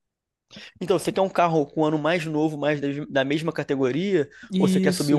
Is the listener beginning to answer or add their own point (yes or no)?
yes